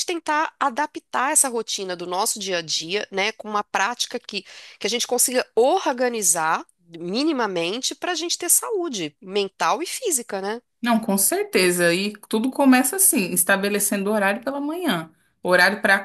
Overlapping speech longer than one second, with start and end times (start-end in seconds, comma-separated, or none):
none